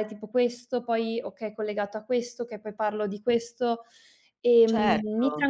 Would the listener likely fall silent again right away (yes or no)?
no